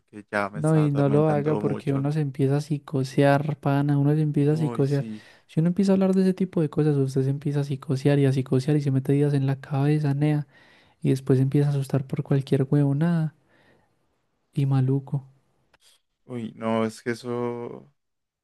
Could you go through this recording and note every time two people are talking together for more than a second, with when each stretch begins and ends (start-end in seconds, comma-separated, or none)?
0.5-2.1